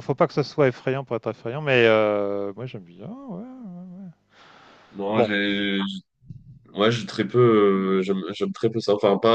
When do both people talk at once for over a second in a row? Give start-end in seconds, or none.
none